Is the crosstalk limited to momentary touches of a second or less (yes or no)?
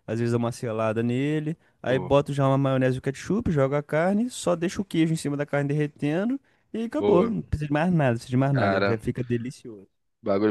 yes